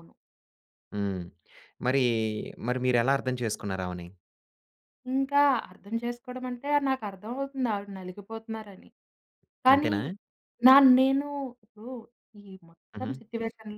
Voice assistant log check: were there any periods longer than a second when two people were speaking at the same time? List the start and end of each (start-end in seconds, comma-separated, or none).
none